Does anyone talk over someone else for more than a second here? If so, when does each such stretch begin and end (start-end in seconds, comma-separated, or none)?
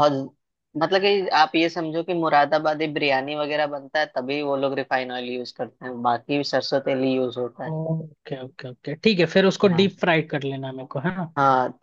none